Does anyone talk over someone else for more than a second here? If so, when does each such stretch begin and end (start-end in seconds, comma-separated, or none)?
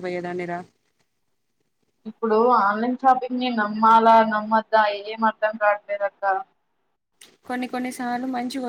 none